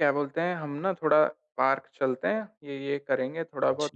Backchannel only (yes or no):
yes